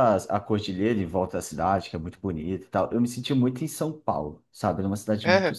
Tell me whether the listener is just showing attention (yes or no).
yes